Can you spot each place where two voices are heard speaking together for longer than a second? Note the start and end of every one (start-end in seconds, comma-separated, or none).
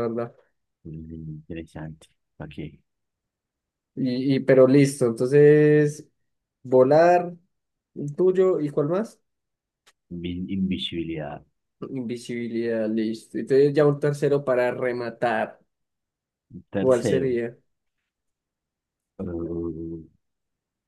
none